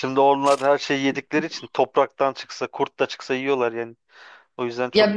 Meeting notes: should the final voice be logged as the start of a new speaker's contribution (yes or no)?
yes